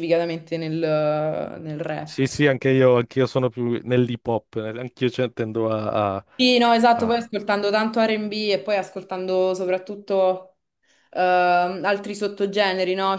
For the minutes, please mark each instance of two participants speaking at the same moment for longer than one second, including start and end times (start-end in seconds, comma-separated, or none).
none